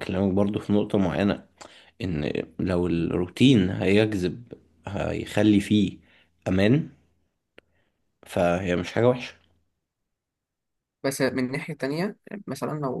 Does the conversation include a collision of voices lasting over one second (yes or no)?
no